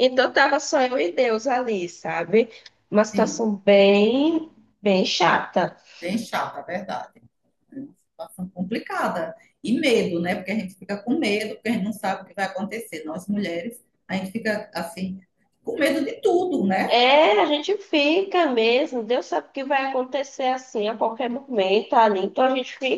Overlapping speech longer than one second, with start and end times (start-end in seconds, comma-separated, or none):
none